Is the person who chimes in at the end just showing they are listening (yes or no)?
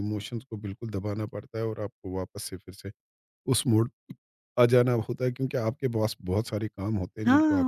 no